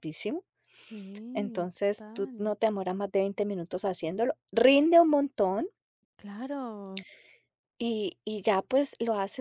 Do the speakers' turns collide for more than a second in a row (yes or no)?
yes